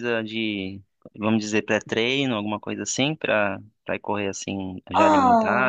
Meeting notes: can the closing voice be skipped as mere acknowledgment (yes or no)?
no